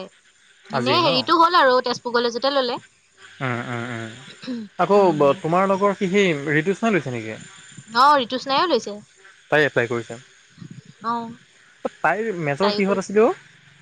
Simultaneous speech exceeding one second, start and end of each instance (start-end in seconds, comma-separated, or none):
none